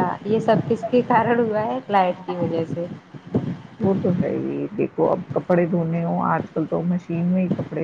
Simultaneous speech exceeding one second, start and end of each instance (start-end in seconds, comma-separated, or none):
none